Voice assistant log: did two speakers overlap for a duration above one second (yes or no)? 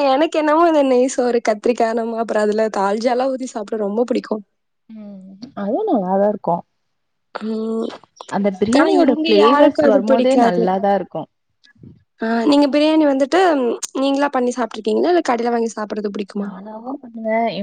yes